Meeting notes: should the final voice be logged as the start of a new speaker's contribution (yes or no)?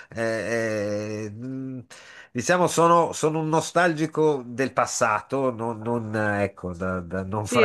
yes